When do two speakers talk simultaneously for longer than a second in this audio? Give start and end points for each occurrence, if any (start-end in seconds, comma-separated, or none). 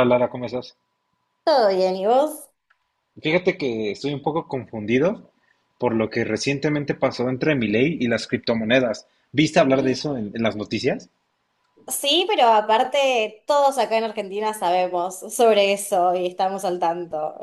none